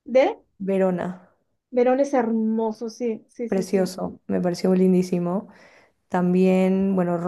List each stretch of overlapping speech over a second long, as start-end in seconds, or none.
none